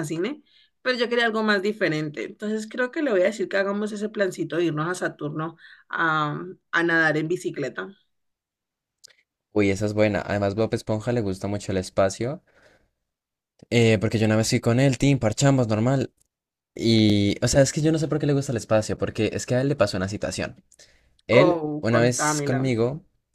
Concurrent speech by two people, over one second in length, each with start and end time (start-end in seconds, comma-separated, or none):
21.3-22.7